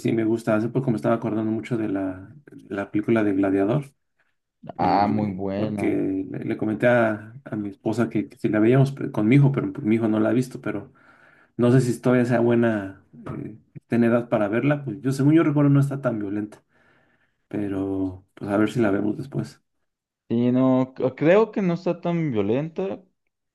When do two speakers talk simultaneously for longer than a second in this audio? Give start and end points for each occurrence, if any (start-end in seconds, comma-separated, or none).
4.8-6.0